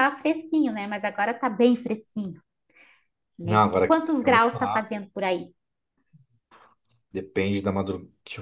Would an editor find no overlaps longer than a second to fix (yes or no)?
no